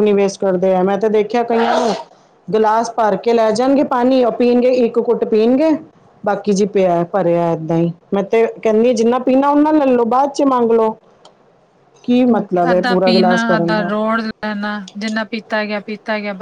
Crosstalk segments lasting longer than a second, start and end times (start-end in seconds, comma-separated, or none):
none